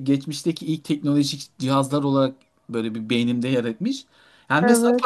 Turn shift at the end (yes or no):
no